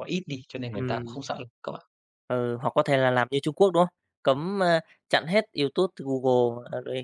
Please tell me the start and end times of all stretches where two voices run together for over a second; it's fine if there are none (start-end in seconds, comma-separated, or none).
none